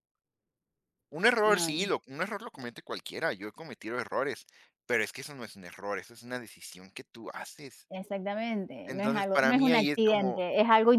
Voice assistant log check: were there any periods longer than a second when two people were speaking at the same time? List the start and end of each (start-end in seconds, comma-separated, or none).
8.9-10.4